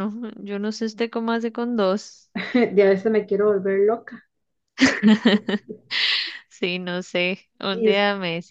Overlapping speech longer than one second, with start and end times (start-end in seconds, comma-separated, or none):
none